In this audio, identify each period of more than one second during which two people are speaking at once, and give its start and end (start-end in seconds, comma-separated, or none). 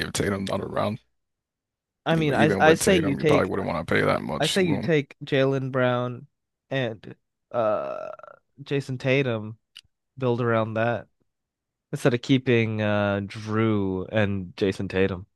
2.1-3.5